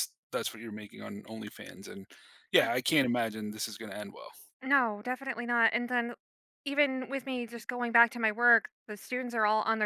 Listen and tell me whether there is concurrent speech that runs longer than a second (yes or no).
no